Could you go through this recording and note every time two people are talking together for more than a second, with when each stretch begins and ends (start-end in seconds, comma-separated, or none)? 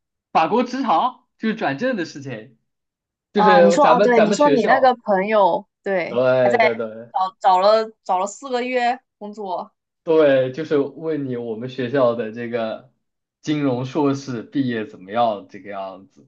3.3-5.0